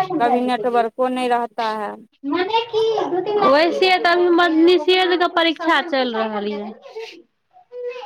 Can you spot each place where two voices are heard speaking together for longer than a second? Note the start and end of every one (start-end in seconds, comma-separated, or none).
none